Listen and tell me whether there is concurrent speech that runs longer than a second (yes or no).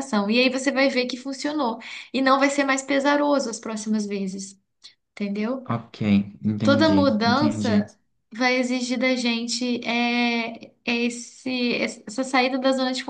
yes